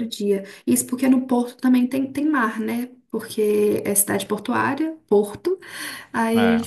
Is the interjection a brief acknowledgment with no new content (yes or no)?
yes